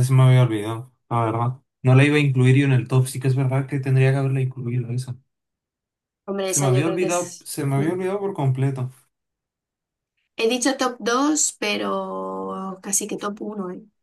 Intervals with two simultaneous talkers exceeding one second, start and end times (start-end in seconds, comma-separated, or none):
6.5-7.9